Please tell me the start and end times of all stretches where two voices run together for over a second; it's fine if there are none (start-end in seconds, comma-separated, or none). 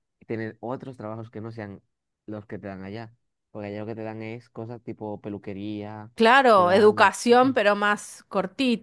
none